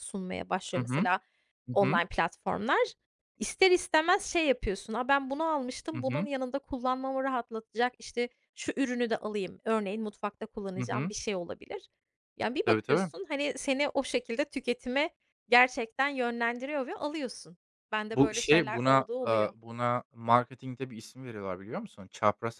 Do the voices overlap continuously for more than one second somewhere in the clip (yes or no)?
yes